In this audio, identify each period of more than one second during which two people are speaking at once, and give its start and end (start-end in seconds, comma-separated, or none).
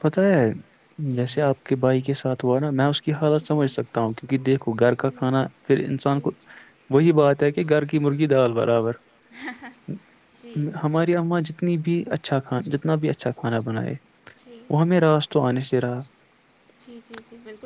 none